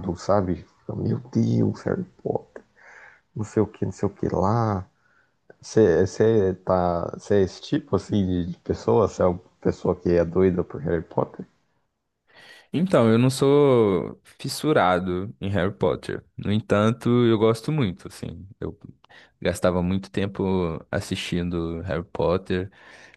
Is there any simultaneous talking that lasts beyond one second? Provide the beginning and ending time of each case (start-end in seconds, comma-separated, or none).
none